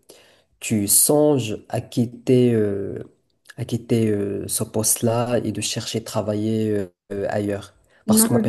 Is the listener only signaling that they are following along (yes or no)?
yes